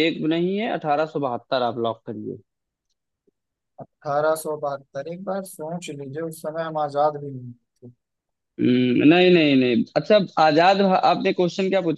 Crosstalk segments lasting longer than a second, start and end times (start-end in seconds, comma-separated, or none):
none